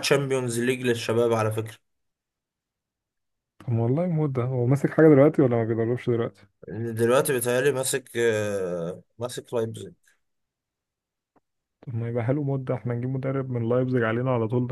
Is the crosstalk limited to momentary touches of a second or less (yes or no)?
yes